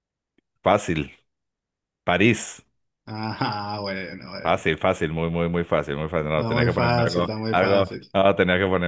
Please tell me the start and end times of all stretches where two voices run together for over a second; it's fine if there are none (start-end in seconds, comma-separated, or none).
6.3-8.1